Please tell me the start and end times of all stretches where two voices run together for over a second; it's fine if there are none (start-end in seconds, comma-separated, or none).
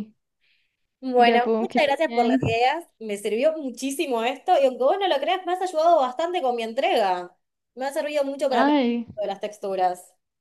1.1-2.4